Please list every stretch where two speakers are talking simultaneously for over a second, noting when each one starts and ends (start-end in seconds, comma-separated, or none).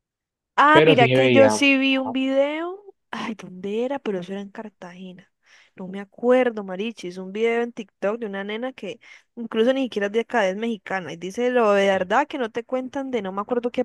0.7-2.2